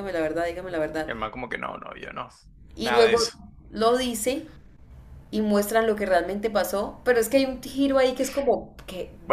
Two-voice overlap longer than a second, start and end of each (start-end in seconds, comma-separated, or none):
none